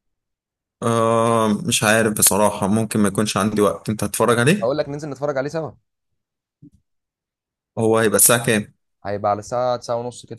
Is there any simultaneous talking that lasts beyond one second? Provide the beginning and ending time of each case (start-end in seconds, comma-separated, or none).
none